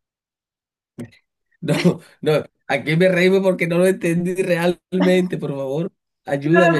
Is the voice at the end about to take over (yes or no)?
yes